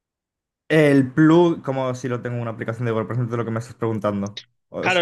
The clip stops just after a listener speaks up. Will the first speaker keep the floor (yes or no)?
no